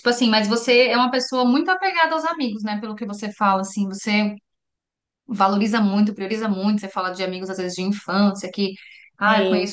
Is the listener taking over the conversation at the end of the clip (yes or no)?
no